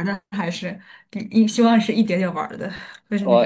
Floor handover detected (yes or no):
yes